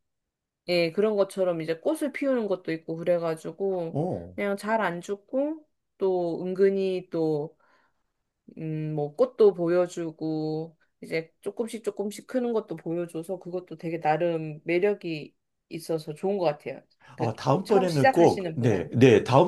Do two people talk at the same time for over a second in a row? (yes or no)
yes